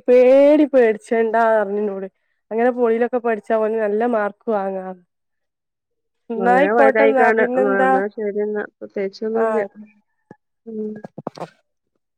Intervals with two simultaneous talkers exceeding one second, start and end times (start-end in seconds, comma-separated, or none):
6.4-7.9